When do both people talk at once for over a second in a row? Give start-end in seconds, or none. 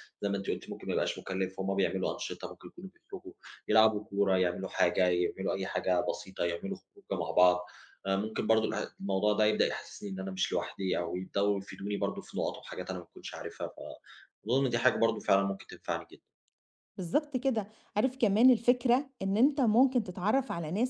none